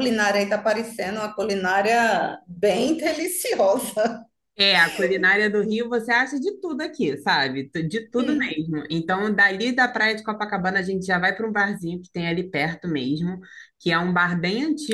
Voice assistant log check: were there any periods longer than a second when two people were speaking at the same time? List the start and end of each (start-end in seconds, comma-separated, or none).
none